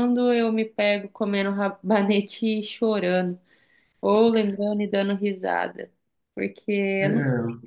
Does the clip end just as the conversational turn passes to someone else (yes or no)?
no